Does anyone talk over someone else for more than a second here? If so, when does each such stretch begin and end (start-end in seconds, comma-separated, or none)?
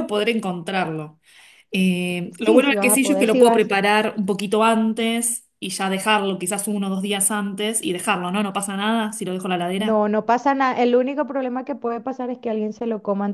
2.4-3.8